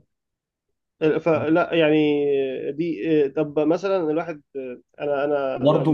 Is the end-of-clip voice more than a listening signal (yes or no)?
yes